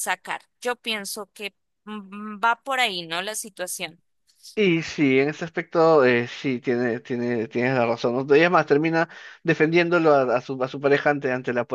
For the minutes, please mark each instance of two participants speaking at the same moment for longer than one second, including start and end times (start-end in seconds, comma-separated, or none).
none